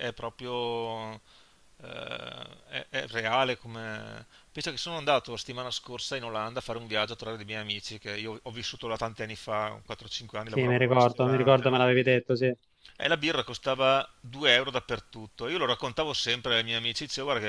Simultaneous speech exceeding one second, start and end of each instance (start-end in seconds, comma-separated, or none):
10.5-11.8